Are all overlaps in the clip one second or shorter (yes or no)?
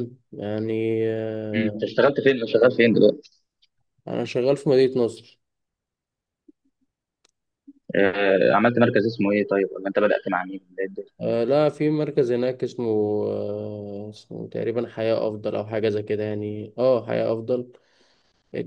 yes